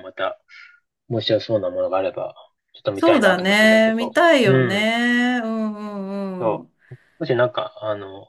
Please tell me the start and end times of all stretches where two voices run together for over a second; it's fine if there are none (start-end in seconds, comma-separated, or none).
2.9-4.9